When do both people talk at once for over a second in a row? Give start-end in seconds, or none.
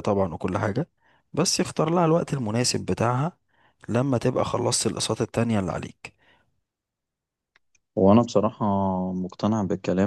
none